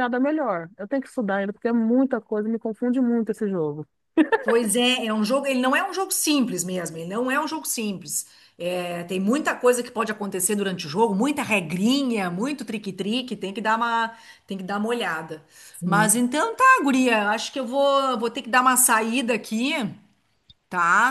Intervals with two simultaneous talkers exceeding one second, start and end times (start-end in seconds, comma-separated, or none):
none